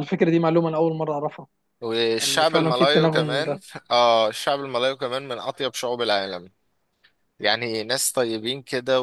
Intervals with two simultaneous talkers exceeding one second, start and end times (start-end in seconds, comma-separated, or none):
2.2-3.6